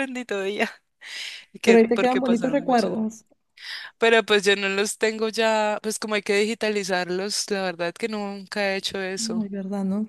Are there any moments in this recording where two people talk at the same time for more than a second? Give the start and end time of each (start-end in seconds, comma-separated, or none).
1.6-2.9